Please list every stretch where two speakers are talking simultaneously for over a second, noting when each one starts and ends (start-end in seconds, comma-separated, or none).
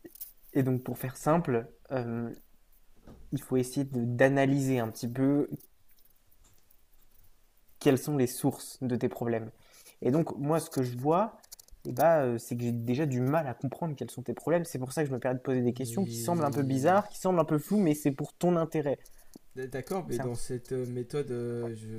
15.8-17.0